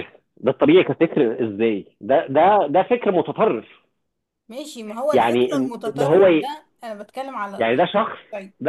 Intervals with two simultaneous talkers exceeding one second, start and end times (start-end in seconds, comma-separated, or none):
5.1-6.5